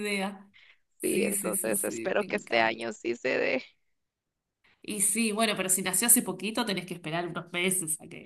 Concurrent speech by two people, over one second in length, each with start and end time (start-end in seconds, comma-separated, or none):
1.0-2.9